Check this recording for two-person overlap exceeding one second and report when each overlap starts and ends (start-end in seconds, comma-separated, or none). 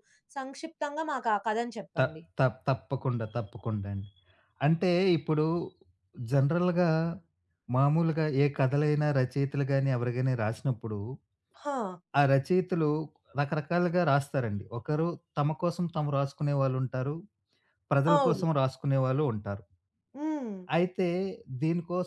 none